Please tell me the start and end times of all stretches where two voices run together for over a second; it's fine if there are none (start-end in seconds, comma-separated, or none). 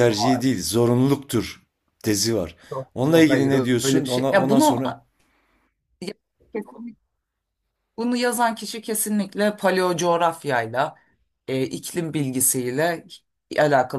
2.9-4.8